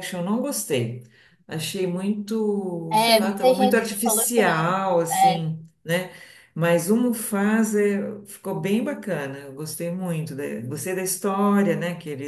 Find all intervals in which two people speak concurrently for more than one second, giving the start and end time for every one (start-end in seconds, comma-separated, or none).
2.9-5.5